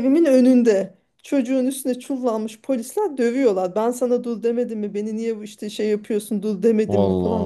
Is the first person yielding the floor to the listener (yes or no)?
no